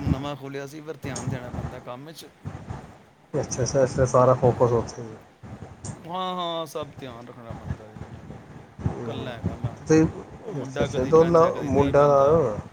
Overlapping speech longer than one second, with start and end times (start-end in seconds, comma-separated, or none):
10.6-12.1